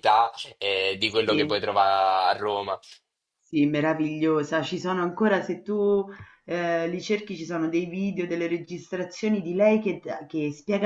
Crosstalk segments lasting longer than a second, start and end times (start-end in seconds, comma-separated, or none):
none